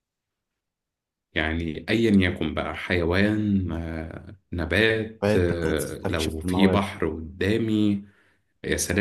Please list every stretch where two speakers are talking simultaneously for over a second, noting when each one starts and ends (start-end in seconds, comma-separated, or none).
5.2-6.8